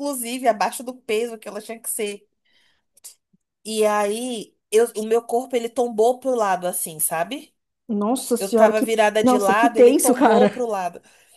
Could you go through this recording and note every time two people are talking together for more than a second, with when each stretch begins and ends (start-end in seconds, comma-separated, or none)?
8.4-10.7